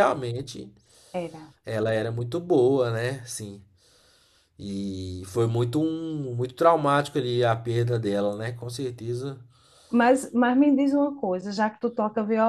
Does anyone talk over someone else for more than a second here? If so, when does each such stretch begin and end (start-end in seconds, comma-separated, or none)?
none